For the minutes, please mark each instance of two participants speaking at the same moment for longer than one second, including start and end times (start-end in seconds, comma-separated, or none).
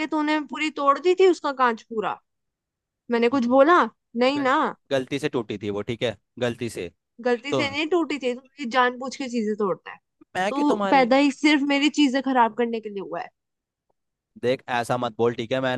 none